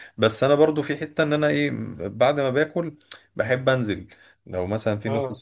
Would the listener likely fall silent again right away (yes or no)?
yes